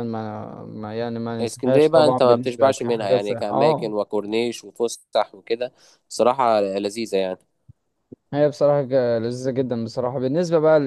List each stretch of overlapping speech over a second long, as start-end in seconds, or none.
1.4-3.9